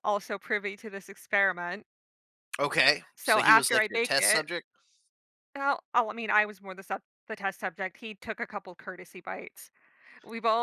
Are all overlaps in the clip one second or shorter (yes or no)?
no